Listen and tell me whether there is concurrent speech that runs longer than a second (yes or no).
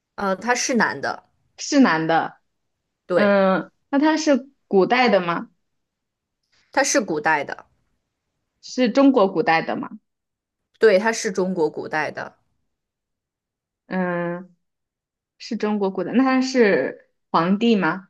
no